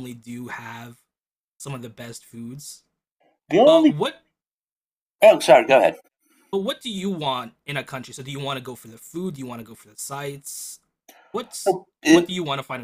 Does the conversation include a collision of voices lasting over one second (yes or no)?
no